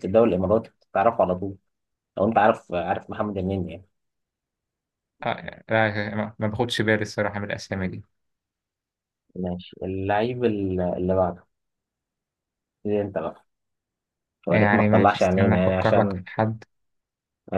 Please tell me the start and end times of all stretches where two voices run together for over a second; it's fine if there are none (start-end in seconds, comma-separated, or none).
14.5-16.2